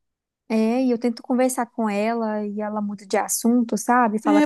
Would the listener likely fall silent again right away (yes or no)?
no